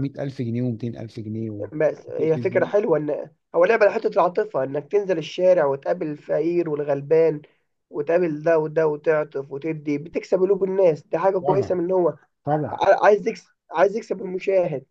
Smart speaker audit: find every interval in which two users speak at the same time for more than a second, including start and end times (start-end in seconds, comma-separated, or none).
none